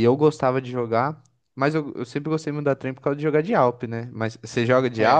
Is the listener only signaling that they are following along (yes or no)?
yes